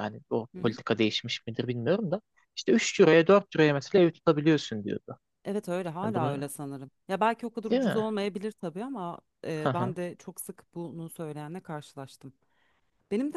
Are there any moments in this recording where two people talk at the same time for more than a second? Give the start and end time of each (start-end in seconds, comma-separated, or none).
none